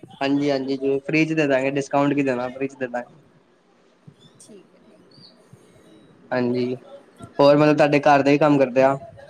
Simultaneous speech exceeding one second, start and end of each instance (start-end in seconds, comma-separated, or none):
none